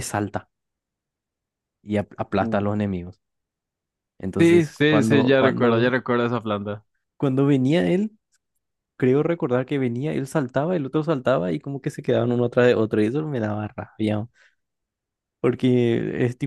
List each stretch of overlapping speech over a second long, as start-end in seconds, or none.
4.4-5.9